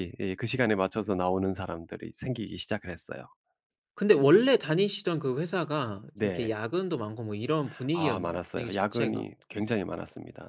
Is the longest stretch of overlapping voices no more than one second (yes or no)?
no